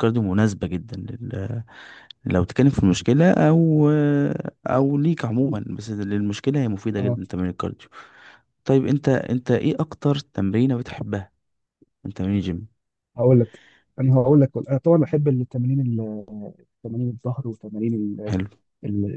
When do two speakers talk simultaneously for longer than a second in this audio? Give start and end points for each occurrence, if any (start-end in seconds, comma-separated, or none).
none